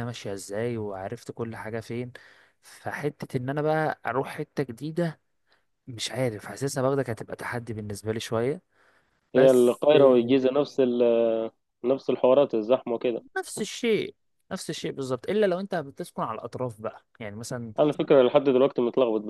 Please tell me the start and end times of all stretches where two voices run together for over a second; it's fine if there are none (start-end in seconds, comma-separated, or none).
none